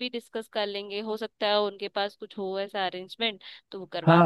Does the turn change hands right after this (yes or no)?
yes